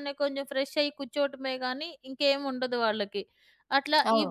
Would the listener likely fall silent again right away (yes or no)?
yes